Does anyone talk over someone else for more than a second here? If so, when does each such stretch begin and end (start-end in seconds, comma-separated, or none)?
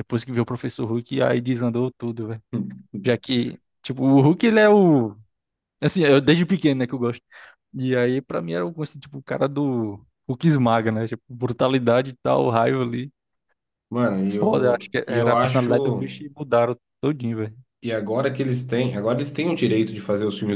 14.2-16.2